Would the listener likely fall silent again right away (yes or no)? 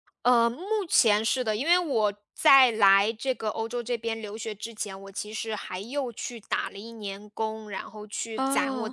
yes